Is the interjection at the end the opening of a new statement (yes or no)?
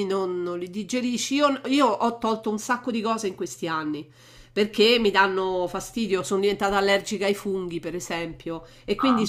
no